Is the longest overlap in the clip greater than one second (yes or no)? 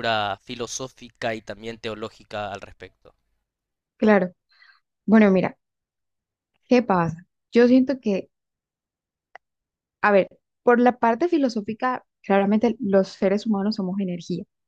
no